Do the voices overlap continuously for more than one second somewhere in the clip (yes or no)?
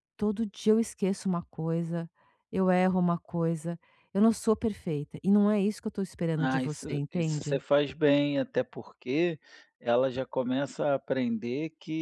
yes